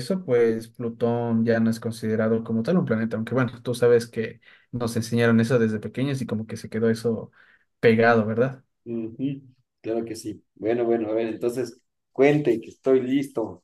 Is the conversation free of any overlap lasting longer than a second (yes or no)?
yes